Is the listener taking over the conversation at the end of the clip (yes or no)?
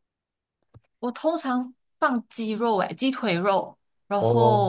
no